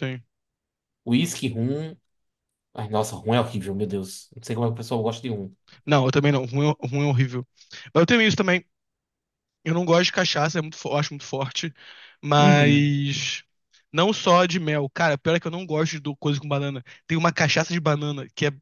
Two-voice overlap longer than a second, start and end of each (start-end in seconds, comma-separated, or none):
none